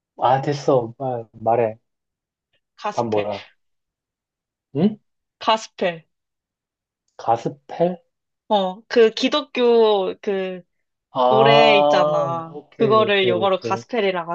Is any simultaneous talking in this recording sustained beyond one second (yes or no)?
yes